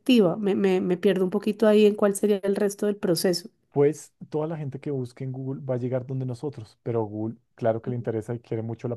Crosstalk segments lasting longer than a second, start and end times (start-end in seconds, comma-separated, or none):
none